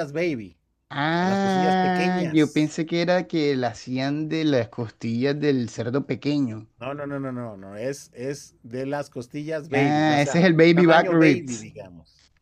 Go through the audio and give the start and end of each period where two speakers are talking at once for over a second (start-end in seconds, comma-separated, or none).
1.2-2.8, 9.8-11.7